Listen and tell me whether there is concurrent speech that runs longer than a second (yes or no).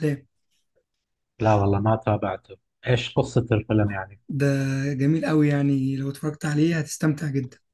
no